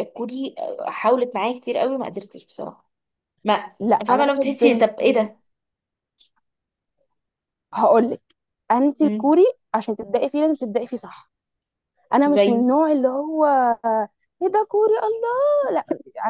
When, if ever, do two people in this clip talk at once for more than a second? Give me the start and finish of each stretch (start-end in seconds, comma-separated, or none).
4.1-5.3